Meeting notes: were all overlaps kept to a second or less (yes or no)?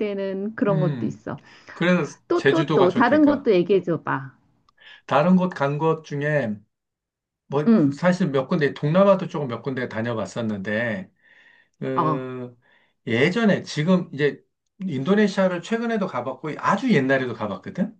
no